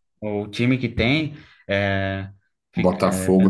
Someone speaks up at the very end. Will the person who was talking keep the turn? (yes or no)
no